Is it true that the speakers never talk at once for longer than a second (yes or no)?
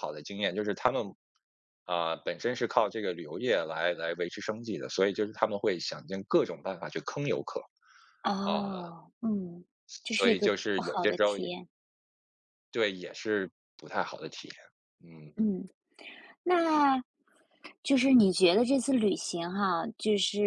no